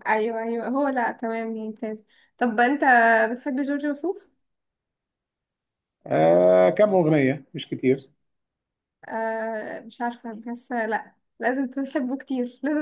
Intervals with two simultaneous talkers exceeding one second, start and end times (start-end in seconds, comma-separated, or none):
none